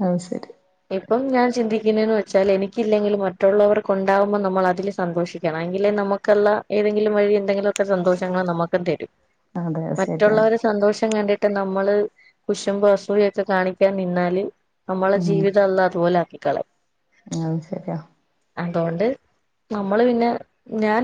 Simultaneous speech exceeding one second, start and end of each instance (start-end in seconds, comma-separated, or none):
none